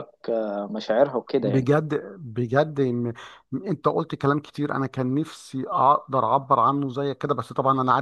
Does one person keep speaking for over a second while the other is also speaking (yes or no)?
no